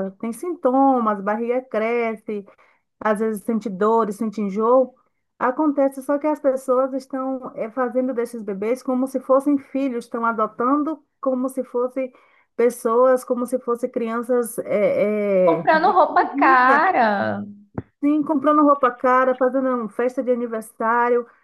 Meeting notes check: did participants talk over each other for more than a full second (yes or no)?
yes